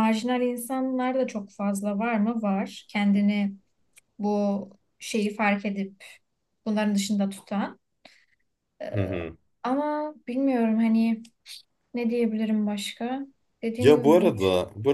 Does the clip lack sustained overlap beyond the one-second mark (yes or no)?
yes